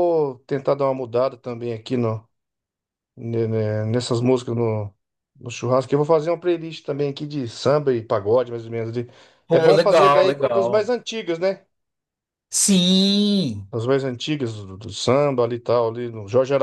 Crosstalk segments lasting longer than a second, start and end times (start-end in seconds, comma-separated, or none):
9.5-10.9